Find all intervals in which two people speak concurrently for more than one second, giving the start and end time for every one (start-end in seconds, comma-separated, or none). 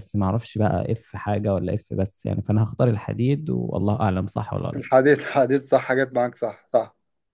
none